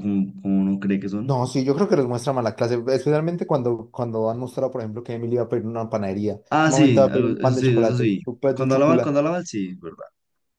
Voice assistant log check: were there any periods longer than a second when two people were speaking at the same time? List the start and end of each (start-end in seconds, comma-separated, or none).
6.5-9.1